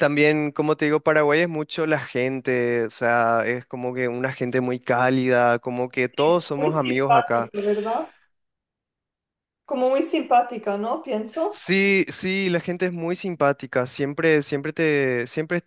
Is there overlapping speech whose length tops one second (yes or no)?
yes